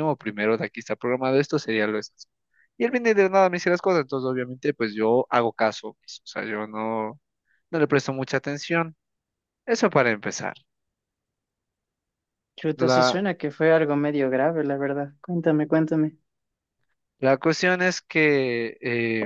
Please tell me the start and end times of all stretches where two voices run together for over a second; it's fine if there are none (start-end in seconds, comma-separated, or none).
none